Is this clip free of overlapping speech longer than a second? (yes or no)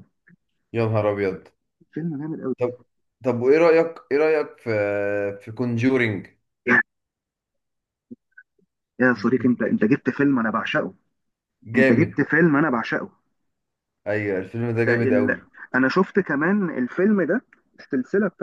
yes